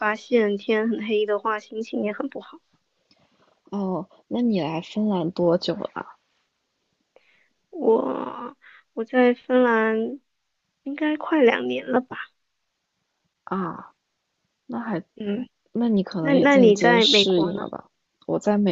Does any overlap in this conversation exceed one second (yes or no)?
yes